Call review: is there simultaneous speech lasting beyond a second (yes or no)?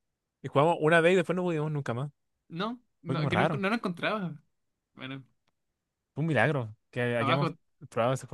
no